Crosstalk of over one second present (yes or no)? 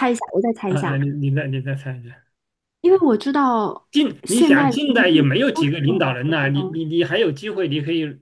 yes